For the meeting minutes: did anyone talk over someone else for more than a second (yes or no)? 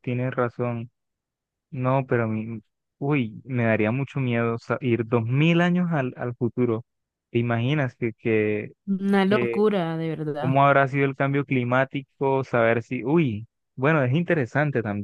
no